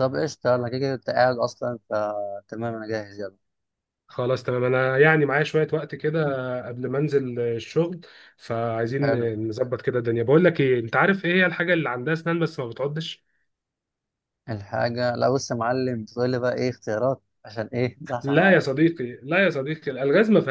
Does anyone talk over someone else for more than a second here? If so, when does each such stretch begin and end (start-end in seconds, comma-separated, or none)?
none